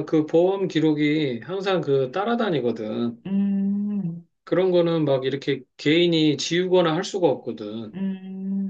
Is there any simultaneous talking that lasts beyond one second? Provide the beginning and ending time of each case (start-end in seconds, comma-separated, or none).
none